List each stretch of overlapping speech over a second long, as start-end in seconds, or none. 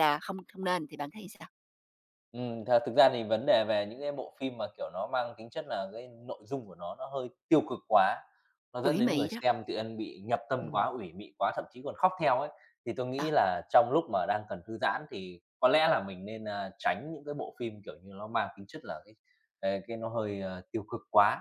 none